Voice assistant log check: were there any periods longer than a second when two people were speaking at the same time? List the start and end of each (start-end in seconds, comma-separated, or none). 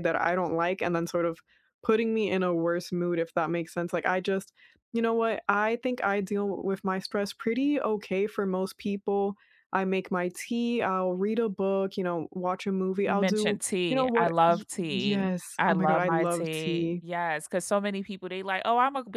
13.1-17.0